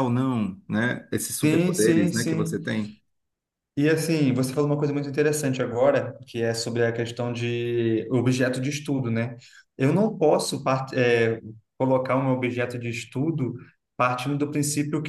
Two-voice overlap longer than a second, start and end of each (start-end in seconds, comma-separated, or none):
1.4-2.6